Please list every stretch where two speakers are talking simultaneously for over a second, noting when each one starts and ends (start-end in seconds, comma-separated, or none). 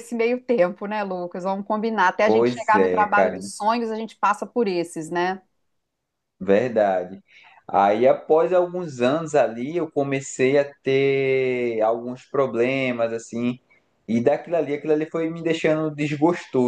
2.2-3.5